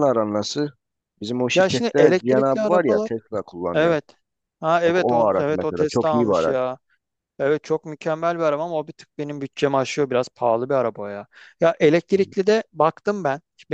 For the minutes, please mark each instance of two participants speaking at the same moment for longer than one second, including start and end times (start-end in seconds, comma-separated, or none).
1.5-3.1, 4.8-6.6